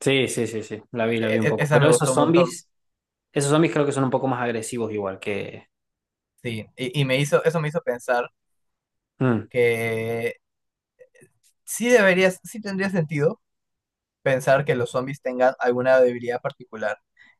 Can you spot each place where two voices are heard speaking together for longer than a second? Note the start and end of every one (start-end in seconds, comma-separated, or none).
1.2-2.6